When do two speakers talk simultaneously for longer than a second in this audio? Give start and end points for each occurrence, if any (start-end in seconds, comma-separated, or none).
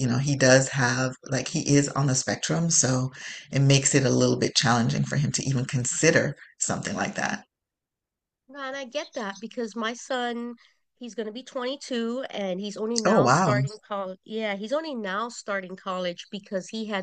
none